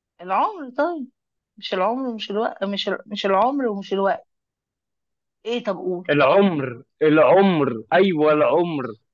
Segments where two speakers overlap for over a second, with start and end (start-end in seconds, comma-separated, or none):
none